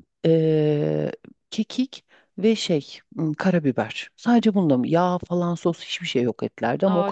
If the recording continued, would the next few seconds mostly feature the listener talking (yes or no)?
yes